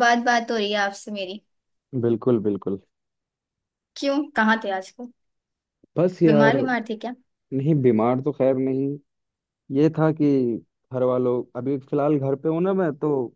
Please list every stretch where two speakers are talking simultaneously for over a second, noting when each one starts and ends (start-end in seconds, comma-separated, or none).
none